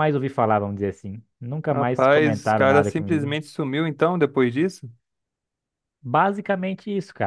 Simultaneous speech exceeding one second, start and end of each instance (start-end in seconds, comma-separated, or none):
1.7-3.3